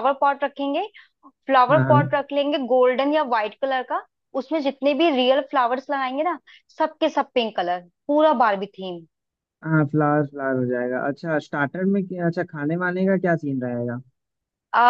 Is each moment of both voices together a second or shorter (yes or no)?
yes